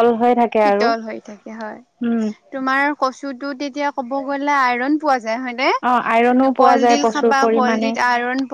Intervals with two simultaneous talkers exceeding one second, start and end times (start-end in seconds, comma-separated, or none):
6.1-7.9